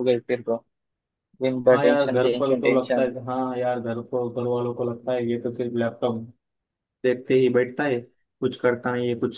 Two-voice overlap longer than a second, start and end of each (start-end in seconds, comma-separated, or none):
1.7-3.1